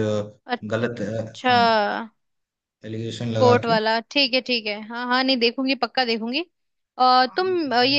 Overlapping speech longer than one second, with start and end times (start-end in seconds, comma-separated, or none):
none